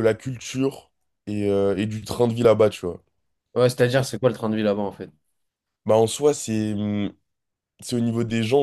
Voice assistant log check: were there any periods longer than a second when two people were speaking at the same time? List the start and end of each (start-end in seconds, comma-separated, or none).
none